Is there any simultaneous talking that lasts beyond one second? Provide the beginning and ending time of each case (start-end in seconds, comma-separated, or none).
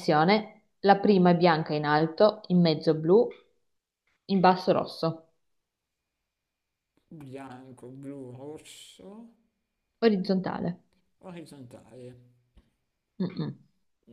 none